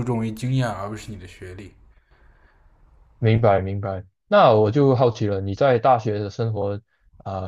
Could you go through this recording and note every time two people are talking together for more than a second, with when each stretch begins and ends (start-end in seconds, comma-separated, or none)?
none